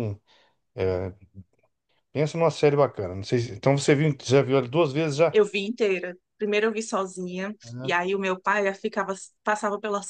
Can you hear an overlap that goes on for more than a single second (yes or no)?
no